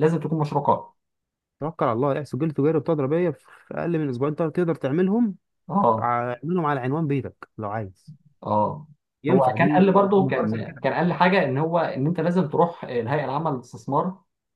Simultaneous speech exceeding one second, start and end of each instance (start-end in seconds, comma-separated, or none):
9.3-10.8